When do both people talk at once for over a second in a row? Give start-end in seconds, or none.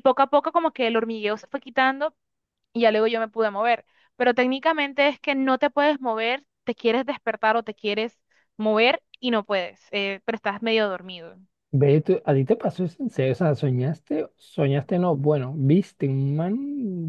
none